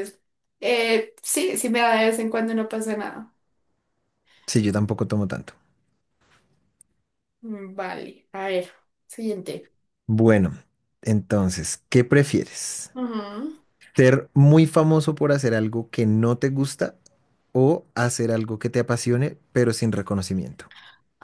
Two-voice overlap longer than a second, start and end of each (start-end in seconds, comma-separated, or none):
none